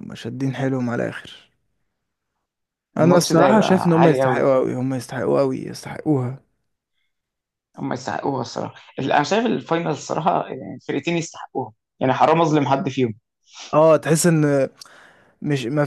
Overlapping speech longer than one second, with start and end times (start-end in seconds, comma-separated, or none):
3.0-4.4